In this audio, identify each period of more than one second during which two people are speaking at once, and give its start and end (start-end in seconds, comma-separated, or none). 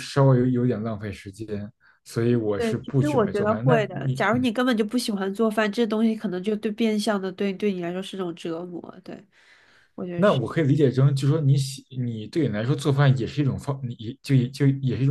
2.6-4.5